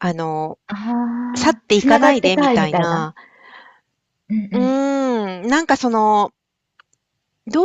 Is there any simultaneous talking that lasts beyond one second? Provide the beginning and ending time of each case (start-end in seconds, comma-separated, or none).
1.6-3.1